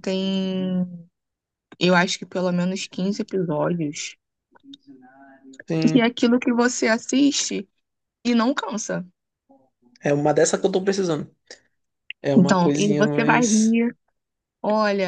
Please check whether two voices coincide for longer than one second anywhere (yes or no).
yes